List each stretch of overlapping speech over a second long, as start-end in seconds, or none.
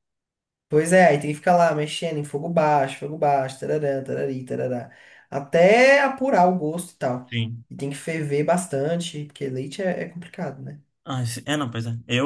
none